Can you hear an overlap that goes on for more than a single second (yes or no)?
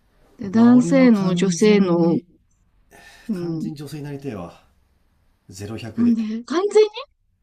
yes